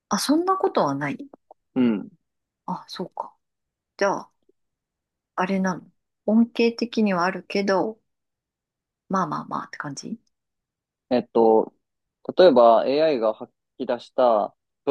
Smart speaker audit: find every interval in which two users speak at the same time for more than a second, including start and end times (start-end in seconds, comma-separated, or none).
none